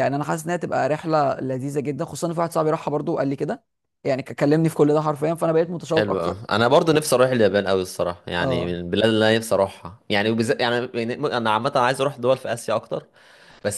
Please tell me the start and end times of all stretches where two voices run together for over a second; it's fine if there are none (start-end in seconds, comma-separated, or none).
none